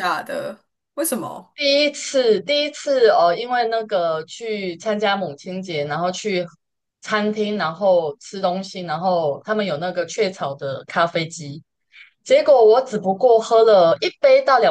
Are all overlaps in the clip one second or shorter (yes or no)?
yes